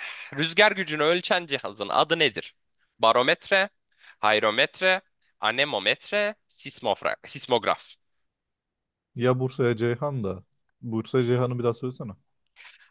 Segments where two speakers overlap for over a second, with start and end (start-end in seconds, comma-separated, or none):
none